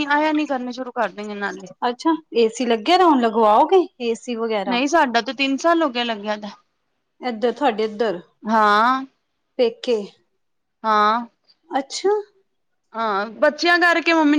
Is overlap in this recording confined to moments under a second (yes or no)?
yes